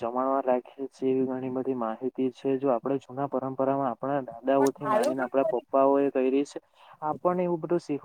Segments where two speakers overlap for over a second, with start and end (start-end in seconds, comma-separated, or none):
4.6-6.1